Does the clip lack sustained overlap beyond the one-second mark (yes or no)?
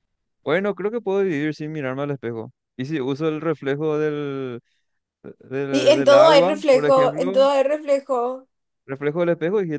no